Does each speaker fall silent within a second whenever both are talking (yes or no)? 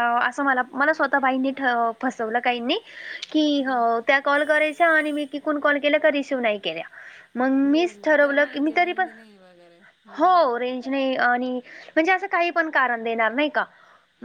no